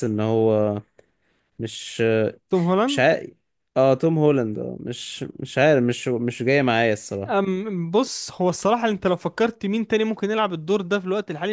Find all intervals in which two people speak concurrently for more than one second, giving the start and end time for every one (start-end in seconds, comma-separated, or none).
none